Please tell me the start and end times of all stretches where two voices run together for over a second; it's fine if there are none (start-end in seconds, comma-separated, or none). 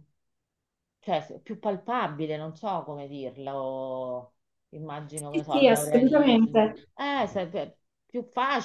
5.1-6.9